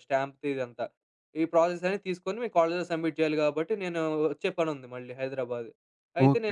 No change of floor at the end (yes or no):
no